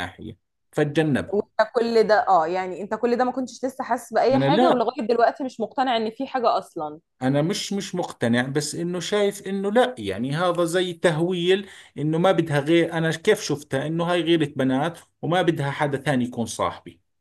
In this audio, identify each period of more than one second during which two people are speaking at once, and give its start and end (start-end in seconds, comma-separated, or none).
none